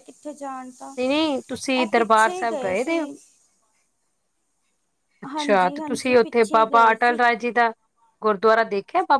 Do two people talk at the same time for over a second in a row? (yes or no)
yes